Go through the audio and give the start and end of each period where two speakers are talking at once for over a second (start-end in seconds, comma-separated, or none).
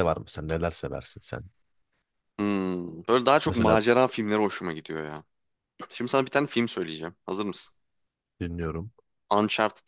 none